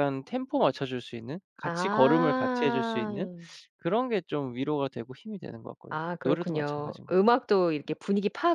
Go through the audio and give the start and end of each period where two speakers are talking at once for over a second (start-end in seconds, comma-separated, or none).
1.6-3.1, 5.9-7.3